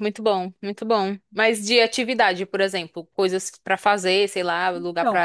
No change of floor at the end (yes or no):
no